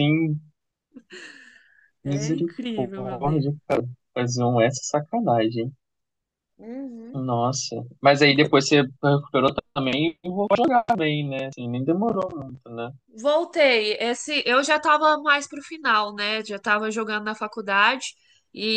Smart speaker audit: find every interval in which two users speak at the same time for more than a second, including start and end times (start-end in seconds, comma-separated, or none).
2.0-3.5